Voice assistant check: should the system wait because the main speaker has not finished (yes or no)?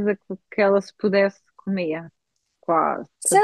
no